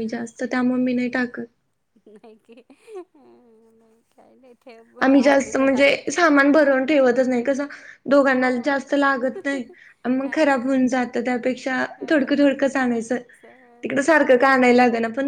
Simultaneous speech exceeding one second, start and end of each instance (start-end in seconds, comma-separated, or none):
5.0-6.4